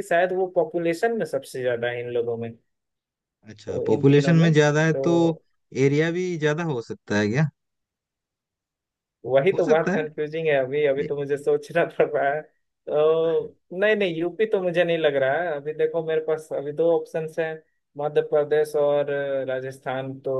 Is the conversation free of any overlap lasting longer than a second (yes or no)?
no